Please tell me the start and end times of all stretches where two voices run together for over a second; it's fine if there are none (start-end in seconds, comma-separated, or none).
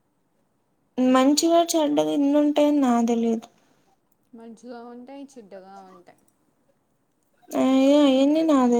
none